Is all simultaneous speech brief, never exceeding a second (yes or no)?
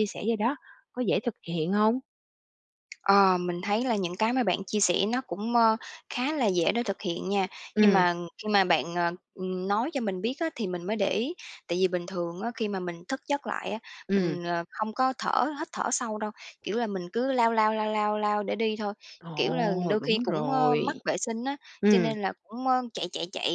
no